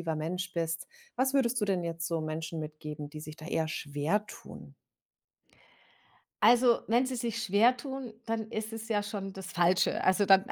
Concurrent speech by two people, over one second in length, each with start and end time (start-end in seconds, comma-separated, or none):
none